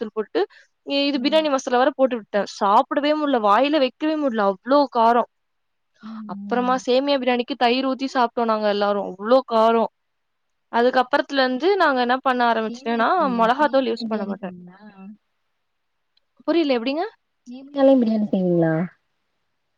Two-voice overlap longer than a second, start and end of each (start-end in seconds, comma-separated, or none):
12.7-14.5